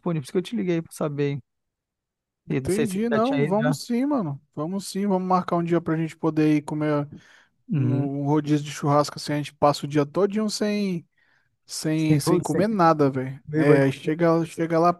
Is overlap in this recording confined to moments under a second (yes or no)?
no